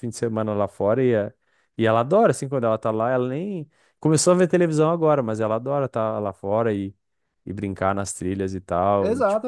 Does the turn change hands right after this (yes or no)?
yes